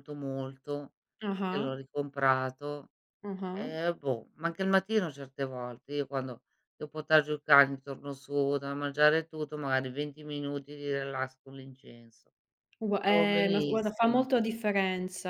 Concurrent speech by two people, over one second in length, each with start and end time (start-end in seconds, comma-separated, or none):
13.0-14.2